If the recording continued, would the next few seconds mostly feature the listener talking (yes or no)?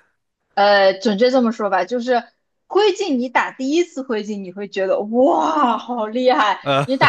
no